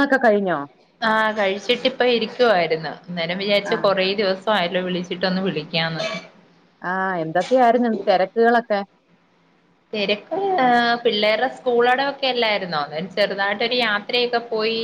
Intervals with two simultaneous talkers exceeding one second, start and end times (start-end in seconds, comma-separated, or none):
none